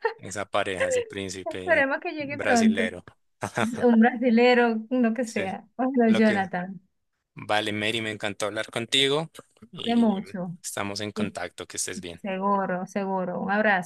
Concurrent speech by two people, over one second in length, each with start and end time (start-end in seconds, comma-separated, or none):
1.4-2.9